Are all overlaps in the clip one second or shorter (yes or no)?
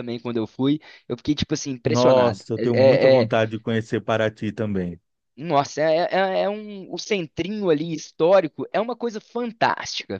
no